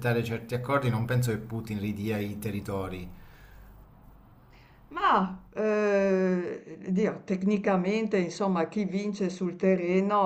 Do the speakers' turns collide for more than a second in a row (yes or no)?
no